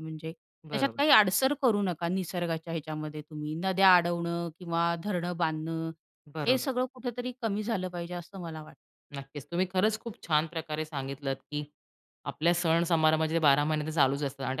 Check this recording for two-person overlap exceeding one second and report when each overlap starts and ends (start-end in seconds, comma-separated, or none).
none